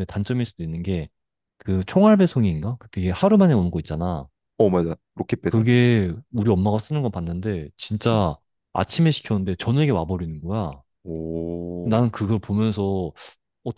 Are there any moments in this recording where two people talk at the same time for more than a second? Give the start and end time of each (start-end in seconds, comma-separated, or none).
none